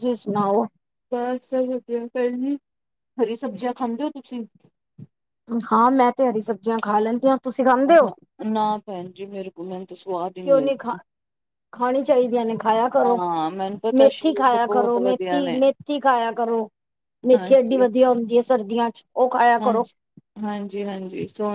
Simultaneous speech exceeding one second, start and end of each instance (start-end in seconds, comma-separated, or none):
14.0-15.6